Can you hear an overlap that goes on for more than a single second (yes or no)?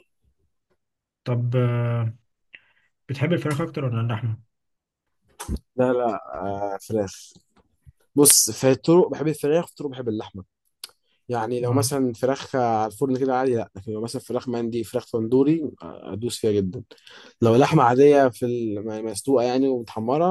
no